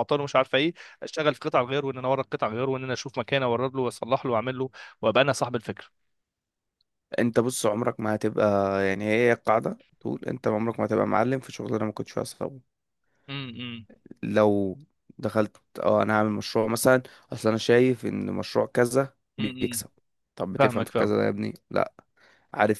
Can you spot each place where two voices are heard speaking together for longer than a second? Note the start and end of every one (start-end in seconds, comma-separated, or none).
none